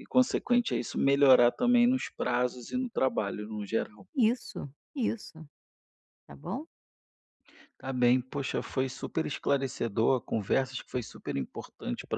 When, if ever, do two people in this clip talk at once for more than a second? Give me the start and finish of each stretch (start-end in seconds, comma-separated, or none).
none